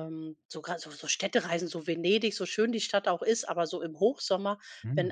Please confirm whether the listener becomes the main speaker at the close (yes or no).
no